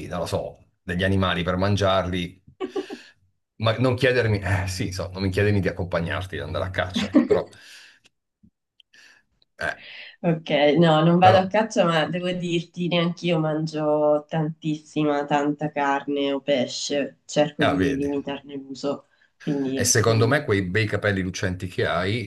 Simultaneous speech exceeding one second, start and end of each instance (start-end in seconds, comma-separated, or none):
none